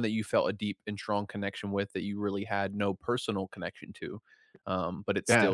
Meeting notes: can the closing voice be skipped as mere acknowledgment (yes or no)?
yes